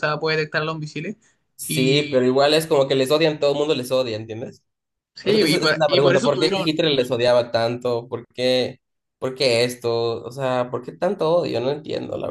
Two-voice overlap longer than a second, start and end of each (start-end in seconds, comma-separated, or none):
5.2-6.7